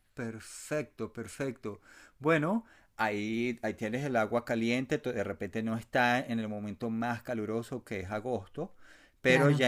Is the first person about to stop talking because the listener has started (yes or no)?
no